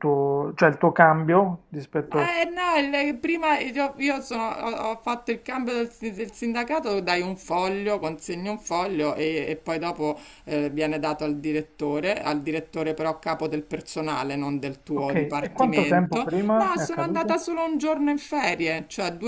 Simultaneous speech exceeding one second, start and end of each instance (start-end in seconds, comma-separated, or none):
15.0-17.4